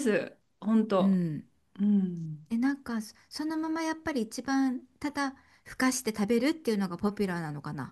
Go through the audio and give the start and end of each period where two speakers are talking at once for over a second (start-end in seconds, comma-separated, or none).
none